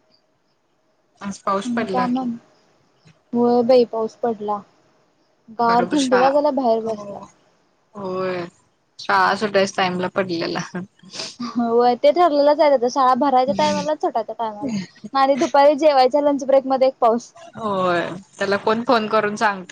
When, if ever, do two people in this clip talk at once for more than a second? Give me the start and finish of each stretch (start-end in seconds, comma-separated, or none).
5.7-7.2